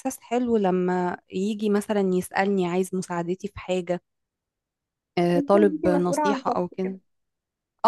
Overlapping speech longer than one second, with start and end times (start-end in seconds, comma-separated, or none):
5.3-7.0